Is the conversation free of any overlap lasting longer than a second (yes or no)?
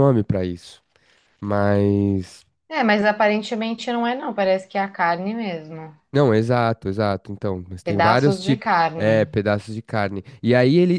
no